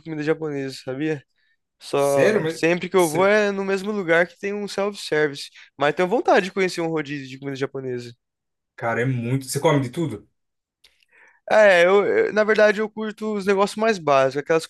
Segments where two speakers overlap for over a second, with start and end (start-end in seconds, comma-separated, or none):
1.9-3.3